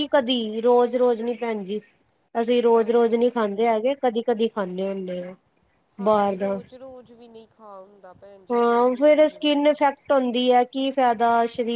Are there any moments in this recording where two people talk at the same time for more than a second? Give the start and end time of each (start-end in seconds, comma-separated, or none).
8.5-10.0